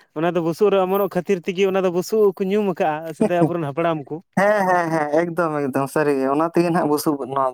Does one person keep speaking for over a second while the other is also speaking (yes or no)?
no